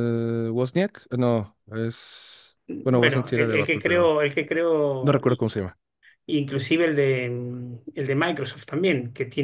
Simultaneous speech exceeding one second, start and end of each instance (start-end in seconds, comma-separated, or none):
2.7-4.1